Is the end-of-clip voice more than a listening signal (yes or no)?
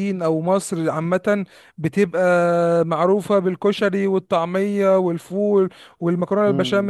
no